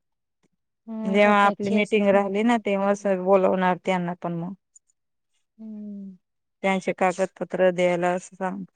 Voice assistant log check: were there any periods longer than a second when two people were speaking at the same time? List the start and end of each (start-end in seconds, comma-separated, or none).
1.2-2.8